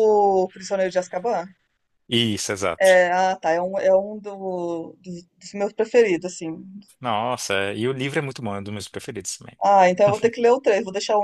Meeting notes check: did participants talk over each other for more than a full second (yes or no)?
no